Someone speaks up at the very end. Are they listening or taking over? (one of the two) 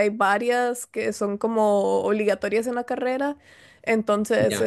listening